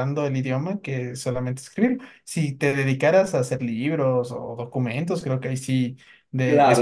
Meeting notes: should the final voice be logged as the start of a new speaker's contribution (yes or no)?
yes